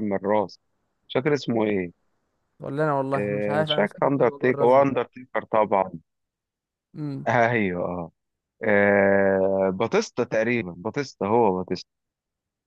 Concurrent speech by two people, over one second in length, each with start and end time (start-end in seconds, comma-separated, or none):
3.2-4.8